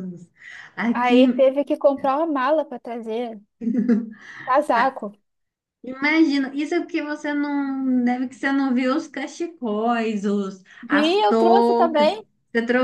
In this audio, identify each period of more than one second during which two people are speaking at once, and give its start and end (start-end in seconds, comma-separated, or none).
10.8-12.2